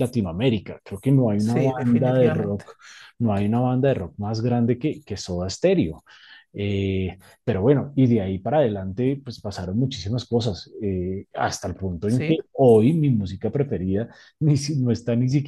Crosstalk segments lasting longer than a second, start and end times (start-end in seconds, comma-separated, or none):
1.4-2.6